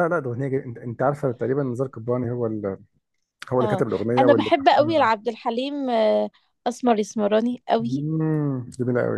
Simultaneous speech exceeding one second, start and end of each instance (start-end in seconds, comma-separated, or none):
3.6-5.1